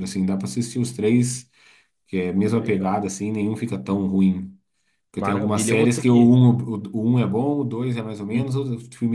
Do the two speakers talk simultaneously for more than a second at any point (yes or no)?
yes